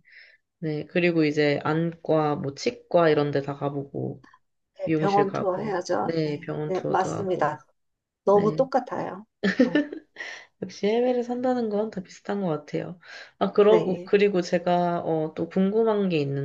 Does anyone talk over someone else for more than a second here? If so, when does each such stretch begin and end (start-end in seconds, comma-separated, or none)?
4.8-7.6